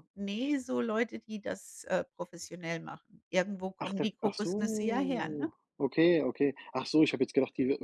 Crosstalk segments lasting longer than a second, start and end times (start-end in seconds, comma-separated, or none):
3.8-5.5